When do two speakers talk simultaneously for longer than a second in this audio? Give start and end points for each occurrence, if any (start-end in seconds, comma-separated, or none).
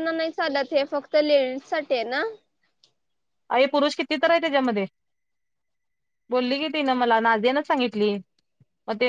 none